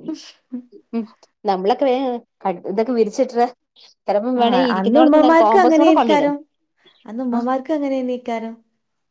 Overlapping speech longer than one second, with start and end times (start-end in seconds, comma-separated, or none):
4.5-6.3